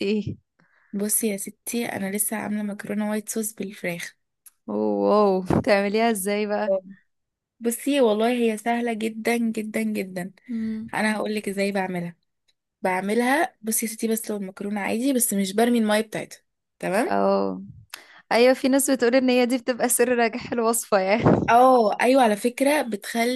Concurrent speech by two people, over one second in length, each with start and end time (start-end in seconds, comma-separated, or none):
none